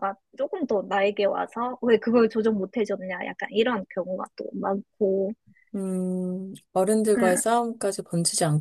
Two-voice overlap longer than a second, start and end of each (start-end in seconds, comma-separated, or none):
none